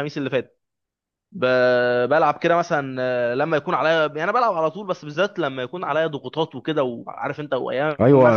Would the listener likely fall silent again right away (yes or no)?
no